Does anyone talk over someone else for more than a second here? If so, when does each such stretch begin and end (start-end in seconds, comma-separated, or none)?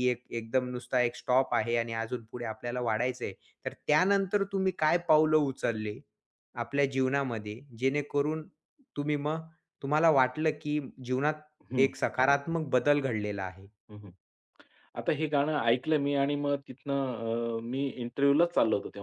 none